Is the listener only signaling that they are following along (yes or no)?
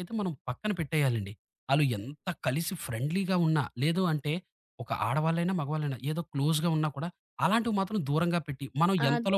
no